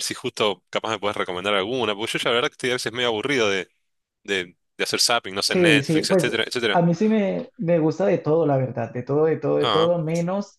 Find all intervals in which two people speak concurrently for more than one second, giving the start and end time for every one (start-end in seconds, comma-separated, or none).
5.4-6.8